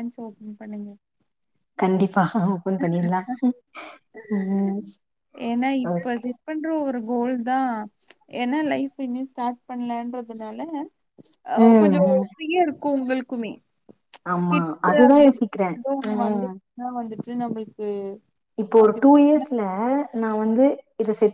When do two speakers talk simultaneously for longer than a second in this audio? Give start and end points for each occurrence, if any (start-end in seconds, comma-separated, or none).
14.5-16.5